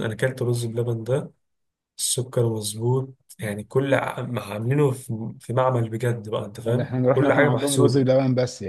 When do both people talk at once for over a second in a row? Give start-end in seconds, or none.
6.6-8.1